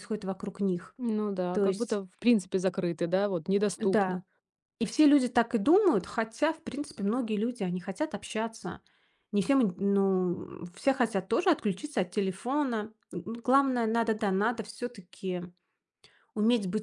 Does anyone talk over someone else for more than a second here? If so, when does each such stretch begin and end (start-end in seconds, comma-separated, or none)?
none